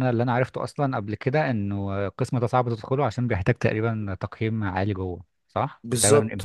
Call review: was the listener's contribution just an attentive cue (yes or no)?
no